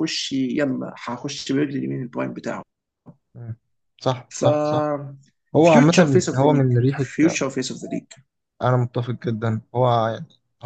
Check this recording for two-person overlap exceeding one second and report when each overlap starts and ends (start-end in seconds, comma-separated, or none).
5.6-7.1